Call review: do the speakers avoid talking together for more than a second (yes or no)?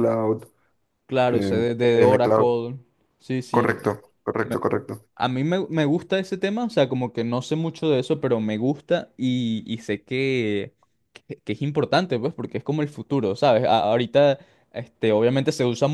no